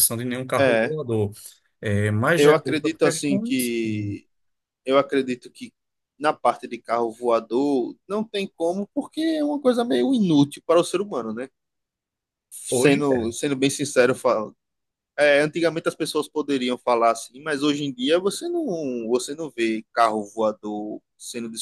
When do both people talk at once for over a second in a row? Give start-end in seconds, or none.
2.4-3.7